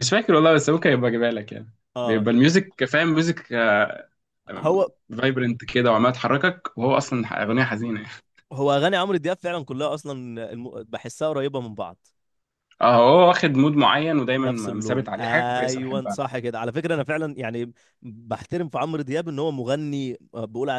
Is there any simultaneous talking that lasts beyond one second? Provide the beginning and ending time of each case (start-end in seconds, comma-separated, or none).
14.4-16.2